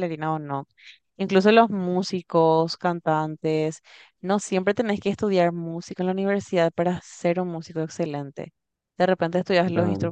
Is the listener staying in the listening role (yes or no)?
yes